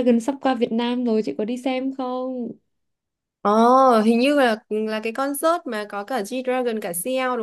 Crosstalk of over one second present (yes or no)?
no